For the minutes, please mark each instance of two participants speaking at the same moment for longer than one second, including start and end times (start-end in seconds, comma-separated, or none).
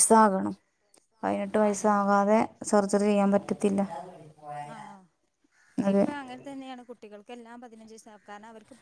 none